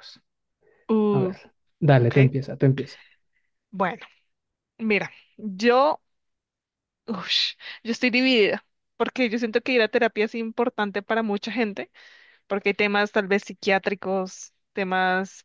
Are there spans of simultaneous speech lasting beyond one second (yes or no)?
no